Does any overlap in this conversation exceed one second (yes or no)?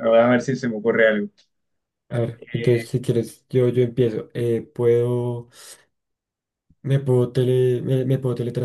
no